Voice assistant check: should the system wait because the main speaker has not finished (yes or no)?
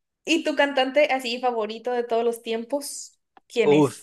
no